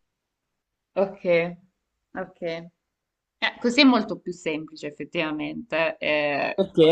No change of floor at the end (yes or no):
no